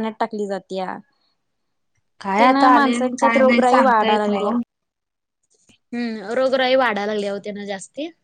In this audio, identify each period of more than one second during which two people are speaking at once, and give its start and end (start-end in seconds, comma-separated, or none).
2.4-4.5